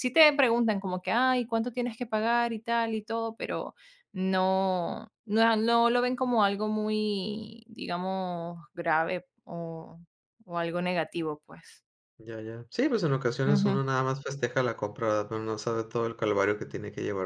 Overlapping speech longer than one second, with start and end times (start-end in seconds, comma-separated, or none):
none